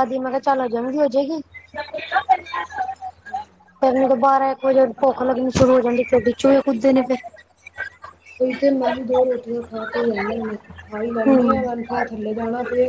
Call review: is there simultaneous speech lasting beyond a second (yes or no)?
no